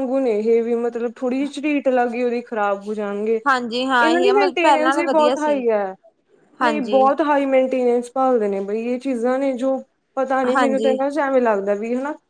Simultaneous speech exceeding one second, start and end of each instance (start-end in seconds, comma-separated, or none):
4.0-5.6